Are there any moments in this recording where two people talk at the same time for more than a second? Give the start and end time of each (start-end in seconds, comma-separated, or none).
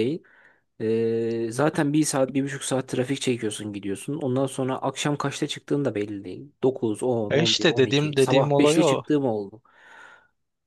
7.3-9.0